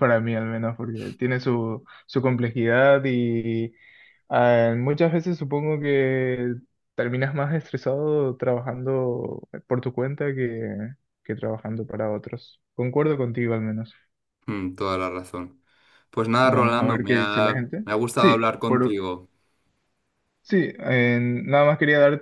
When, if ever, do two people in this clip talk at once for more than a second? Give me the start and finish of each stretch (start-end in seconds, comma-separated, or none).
16.4-19.0